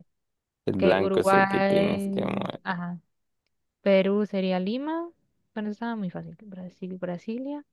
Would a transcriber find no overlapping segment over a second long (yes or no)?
no